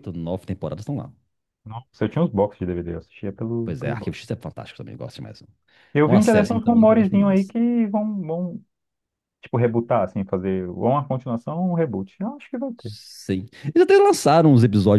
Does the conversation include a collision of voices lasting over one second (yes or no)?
yes